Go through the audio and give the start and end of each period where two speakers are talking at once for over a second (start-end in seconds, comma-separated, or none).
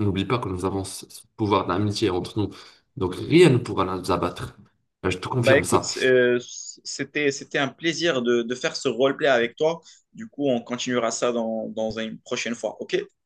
none